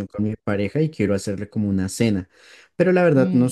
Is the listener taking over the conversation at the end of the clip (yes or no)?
no